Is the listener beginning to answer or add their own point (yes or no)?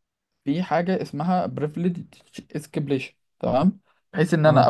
no